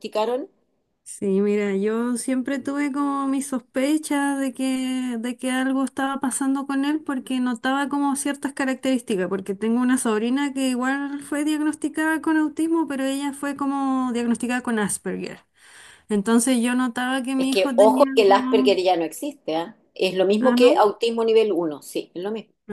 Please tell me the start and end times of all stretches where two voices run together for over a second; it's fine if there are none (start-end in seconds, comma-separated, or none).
17.4-18.8